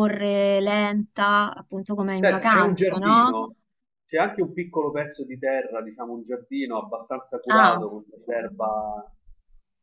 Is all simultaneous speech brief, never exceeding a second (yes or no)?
no